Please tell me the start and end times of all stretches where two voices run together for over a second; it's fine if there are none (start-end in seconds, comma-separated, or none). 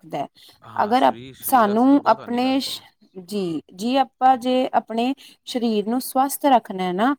0.8-2.6